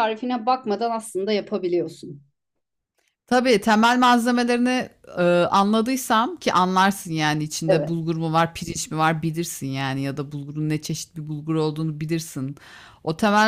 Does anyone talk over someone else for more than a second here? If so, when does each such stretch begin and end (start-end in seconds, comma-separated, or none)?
none